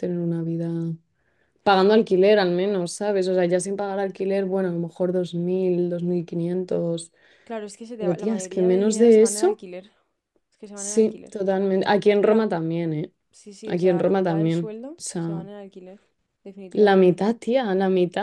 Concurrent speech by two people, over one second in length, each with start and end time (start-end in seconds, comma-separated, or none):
8.0-9.6, 13.7-15.4